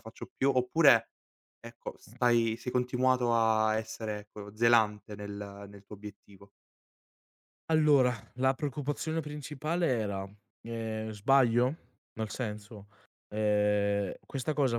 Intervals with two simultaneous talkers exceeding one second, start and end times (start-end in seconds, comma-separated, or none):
none